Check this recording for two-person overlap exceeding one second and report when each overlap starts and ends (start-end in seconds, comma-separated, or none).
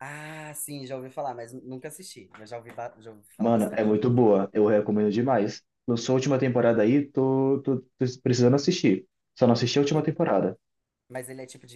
none